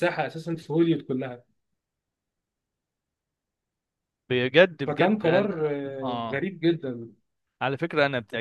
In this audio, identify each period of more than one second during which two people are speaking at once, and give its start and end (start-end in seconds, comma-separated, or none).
4.9-6.5